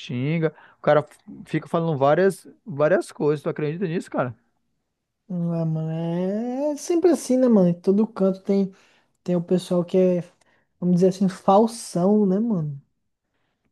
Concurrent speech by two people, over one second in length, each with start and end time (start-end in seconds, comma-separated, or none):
none